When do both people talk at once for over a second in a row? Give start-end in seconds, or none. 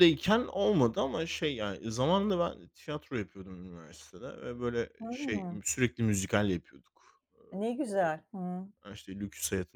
none